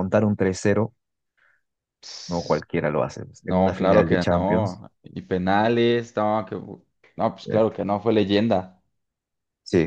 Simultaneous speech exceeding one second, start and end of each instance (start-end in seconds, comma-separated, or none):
3.5-4.8